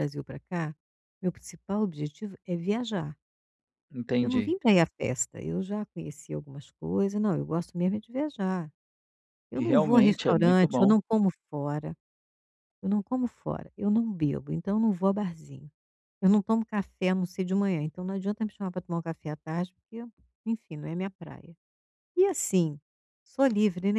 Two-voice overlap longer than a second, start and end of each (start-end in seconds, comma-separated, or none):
9.5-10.9